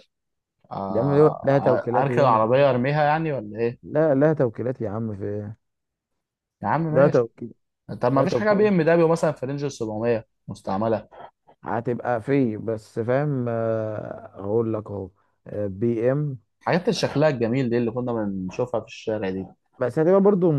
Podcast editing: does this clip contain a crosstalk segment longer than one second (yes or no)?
yes